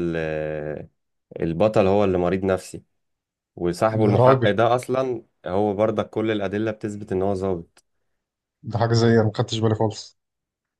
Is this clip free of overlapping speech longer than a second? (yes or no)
yes